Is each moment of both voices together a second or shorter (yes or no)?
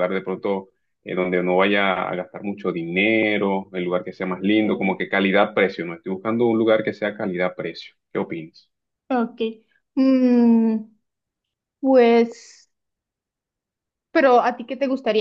yes